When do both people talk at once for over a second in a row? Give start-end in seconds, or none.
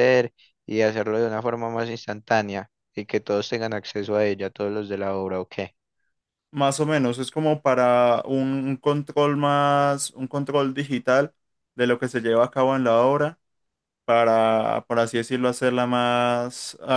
none